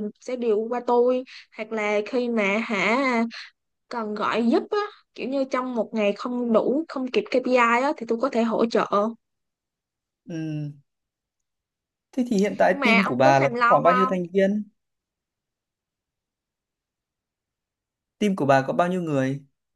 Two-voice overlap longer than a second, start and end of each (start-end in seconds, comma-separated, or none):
12.7-14.1